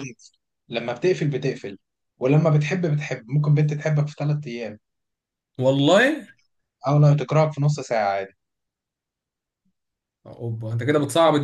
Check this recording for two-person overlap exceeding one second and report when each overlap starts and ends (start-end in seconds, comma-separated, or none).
none